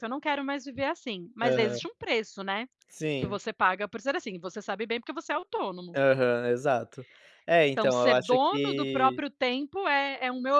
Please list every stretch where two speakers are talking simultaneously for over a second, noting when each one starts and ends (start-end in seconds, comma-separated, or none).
7.7-9.2